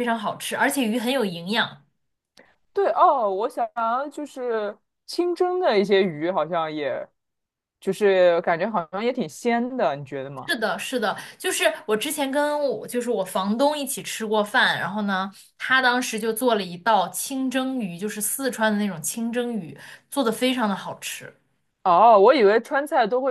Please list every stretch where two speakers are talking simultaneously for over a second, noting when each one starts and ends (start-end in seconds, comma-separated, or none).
none